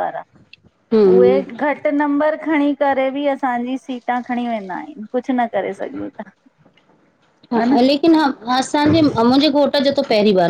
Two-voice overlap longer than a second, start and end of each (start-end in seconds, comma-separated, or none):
none